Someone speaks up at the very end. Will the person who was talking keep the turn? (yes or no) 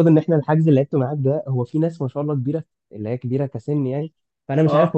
yes